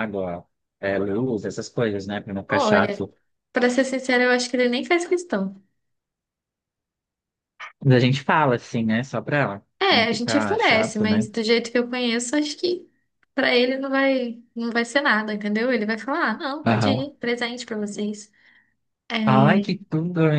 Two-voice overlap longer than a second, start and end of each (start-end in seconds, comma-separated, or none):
9.8-11.3